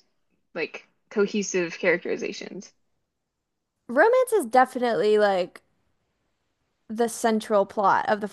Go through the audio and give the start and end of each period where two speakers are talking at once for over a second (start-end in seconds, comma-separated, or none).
none